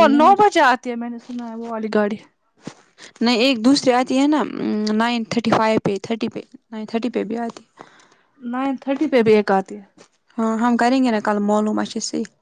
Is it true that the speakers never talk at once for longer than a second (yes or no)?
yes